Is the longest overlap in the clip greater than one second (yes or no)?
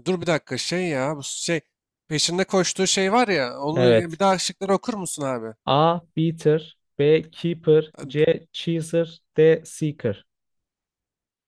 no